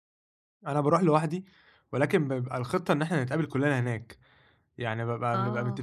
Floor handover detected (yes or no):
no